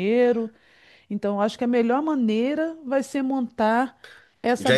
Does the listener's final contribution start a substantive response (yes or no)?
yes